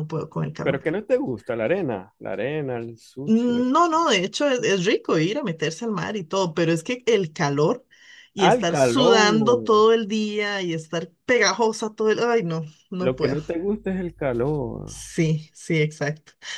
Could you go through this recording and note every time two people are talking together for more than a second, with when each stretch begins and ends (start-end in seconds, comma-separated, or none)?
8.4-9.8